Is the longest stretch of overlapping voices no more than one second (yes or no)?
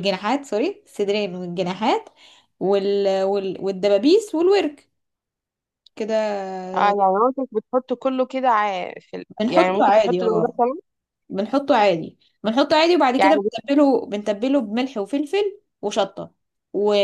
no